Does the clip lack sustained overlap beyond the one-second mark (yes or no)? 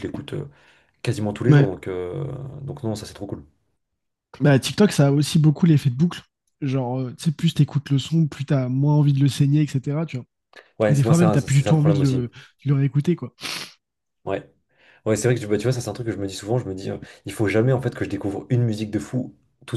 no